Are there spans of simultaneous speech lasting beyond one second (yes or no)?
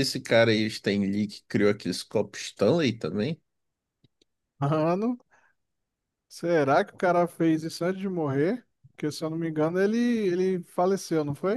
no